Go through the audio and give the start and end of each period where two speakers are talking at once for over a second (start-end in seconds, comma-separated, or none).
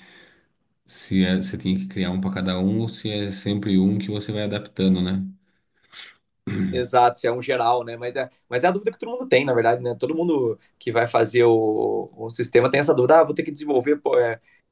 none